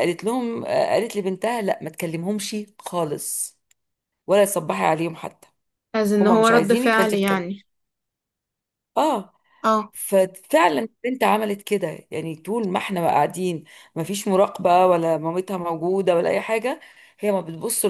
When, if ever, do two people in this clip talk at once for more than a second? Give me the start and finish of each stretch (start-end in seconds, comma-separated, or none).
6.2-7.5